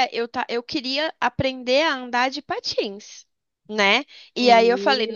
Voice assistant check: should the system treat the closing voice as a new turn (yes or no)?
no